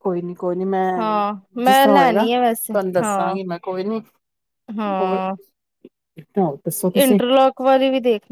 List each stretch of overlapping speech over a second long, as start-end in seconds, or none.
1.6-3.4